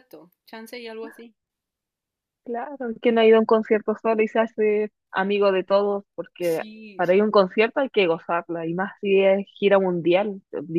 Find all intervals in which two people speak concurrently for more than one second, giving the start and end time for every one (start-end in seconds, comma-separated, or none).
6.4-7.7